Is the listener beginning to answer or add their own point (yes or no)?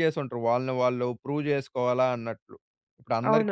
yes